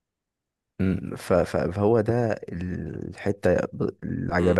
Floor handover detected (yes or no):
yes